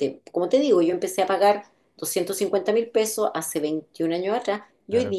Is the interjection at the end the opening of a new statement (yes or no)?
no